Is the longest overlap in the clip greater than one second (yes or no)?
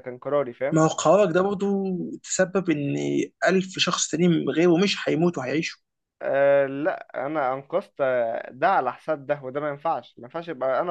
no